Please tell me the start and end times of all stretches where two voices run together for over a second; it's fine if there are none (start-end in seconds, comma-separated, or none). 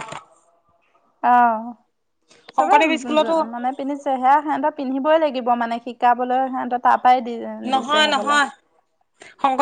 none